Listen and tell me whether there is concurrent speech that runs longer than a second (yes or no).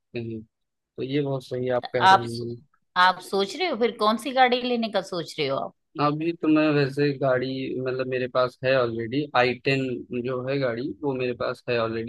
no